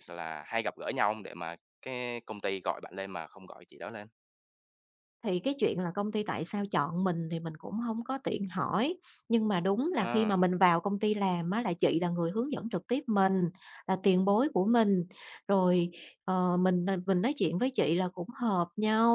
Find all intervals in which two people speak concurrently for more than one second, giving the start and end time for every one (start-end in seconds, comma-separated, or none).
none